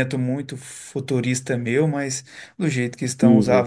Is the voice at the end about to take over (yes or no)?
no